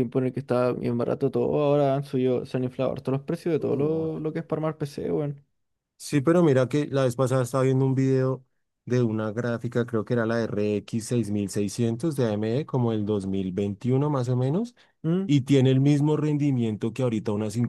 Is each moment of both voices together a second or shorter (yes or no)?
yes